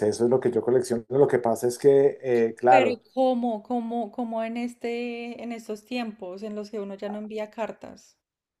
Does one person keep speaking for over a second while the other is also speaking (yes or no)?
no